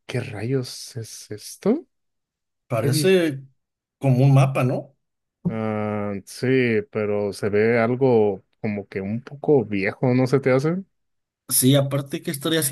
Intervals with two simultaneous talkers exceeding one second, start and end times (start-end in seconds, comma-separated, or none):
none